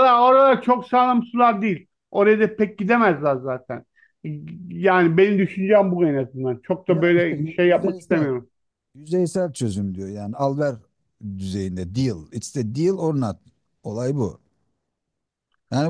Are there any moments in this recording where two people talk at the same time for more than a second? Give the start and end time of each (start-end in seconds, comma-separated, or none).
6.9-8.3